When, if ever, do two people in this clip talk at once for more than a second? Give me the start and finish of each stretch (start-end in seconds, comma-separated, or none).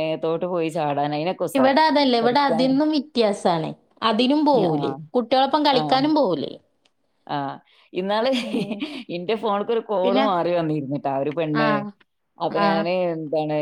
none